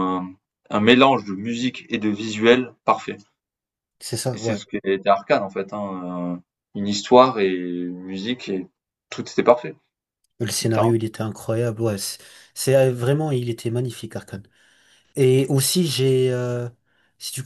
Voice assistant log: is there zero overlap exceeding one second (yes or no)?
yes